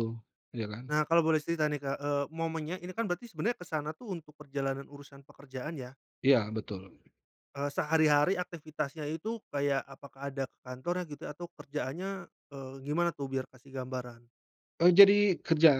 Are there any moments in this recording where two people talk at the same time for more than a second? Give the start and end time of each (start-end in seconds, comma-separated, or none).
none